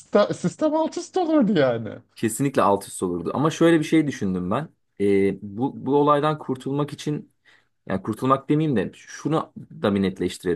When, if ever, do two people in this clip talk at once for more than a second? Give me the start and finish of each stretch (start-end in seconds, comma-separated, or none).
none